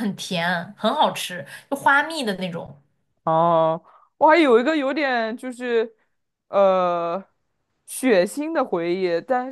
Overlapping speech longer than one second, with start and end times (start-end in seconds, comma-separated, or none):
none